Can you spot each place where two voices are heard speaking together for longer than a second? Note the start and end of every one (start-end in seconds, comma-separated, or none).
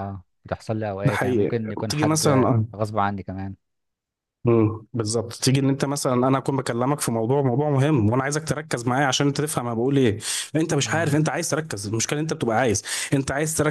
1.0-2.6